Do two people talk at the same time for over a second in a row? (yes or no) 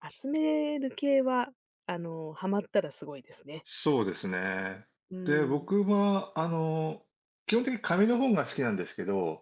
no